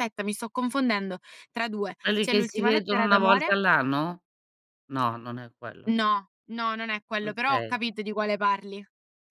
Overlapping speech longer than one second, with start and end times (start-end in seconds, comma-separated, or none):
2.0-3.5